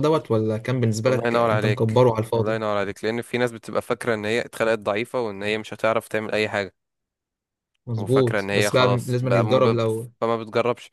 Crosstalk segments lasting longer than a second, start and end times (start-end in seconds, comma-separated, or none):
1.1-2.6, 8.0-9.8